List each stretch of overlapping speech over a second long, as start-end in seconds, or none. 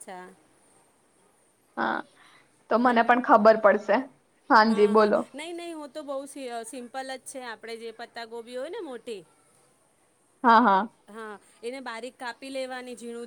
none